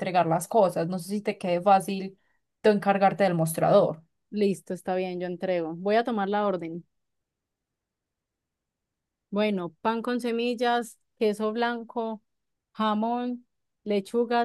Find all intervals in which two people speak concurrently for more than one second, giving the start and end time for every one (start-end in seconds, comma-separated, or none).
none